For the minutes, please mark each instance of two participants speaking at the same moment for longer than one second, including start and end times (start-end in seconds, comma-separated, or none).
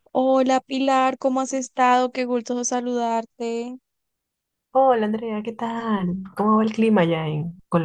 none